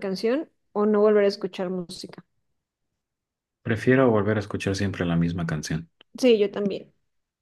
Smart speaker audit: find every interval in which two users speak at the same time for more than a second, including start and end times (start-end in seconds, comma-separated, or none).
none